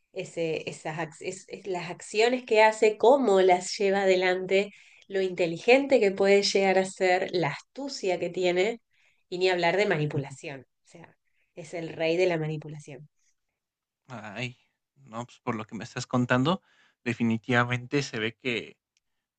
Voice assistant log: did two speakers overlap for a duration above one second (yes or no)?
no